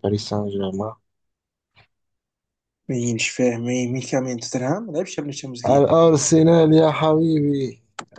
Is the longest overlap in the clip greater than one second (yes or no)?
no